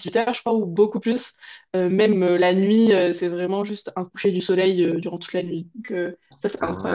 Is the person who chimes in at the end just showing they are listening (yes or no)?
no